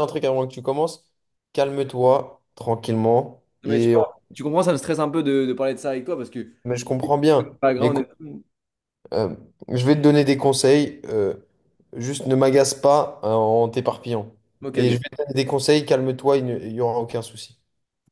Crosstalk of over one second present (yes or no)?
no